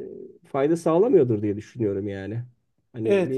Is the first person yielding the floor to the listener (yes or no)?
yes